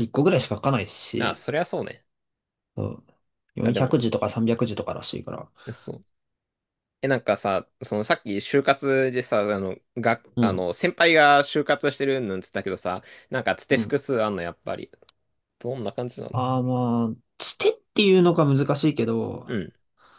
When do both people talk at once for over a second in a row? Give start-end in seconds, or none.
none